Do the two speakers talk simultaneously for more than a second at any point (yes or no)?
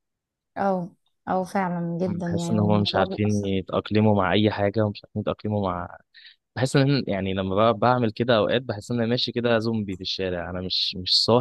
yes